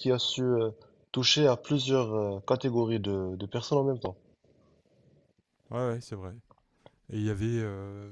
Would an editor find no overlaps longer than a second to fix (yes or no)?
yes